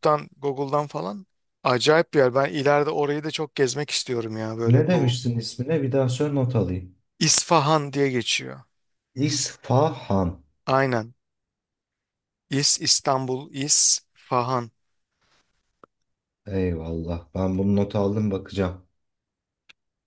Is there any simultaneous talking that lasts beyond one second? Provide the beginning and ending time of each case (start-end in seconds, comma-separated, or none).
none